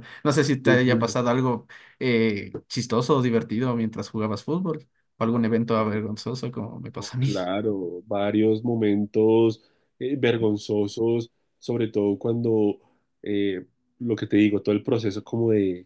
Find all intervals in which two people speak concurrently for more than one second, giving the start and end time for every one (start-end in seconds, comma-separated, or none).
none